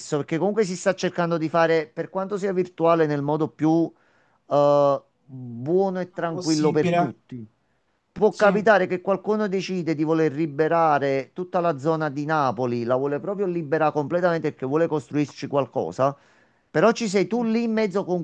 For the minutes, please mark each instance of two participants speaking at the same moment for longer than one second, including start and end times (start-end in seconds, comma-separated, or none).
5.9-7.1